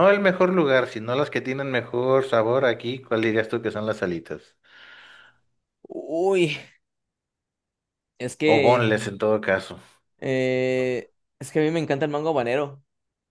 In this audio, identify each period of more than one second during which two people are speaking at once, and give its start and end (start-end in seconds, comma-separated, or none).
none